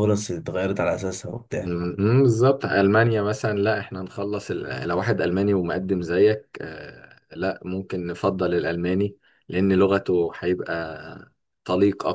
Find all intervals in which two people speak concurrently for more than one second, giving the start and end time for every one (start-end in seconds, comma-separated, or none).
none